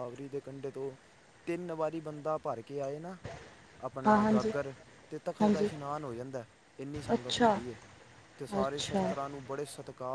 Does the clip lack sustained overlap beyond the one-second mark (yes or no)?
yes